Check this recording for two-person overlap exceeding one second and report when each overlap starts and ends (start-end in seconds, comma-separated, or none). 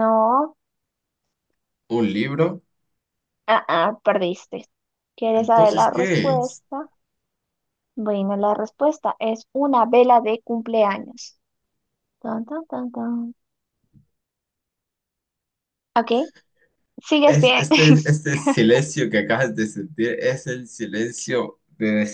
5.3-6.6